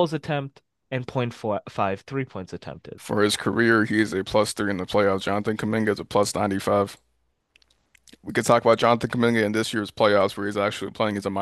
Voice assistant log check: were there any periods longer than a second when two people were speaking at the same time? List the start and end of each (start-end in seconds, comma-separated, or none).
none